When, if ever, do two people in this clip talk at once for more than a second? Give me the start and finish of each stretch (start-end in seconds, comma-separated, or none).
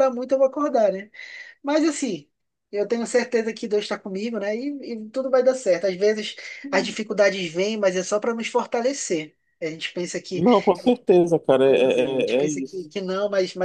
11.7-12.9